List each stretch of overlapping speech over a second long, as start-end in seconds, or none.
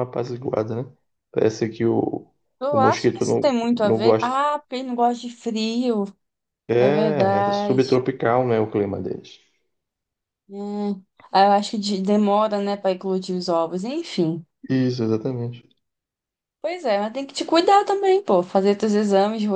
2.7-4.4, 6.8-8.0